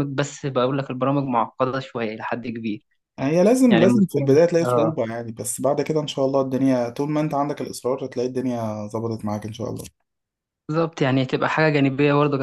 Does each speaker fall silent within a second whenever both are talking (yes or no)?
no